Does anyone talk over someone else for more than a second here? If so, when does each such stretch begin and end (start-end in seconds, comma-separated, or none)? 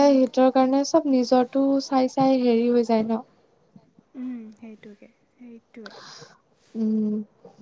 0.8-3.2